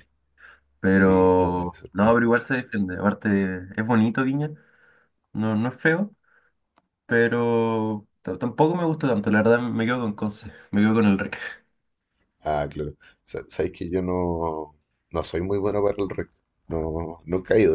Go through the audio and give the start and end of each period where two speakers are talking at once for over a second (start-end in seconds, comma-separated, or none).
0.9-2.2